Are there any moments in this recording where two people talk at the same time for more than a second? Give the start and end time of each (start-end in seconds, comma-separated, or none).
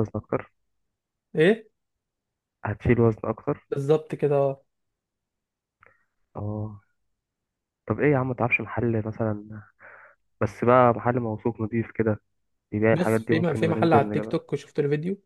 12.9-14.4